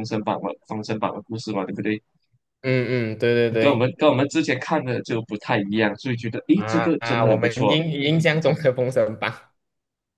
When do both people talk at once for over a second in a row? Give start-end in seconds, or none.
6.5-7.8